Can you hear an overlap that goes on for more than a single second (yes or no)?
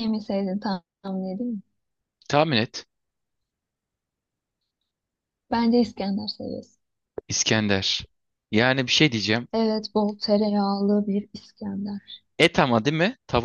no